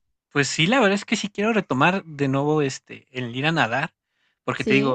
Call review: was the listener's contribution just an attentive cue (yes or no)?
yes